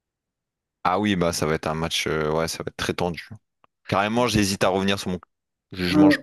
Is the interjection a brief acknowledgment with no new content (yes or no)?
no